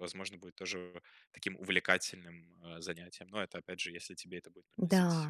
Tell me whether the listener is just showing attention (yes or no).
no